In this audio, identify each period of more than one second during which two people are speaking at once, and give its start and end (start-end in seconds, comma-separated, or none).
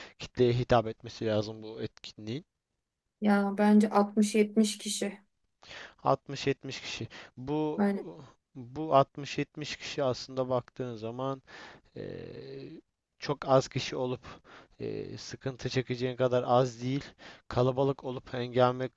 none